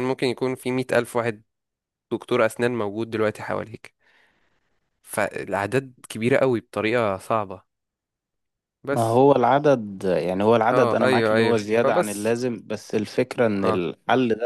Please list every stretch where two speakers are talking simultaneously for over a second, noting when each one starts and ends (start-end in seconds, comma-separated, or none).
10.7-12.3